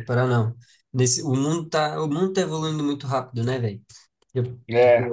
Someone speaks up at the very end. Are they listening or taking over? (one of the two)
listening